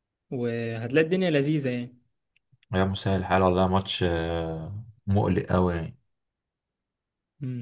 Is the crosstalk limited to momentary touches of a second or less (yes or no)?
yes